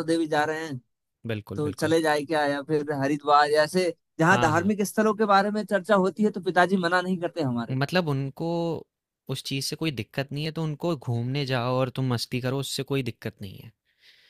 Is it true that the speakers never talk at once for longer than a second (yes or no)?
yes